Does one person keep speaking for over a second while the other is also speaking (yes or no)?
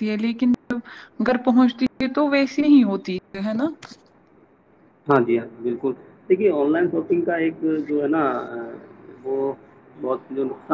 no